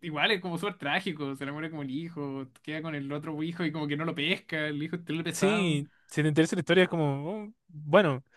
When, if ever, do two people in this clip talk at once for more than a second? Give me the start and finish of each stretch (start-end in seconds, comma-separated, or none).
none